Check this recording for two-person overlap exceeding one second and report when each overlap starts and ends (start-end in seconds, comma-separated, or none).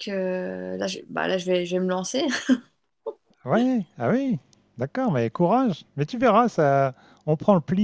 none